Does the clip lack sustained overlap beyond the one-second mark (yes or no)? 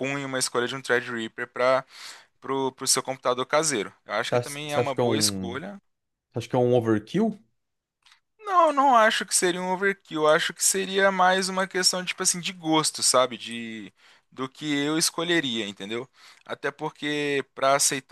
no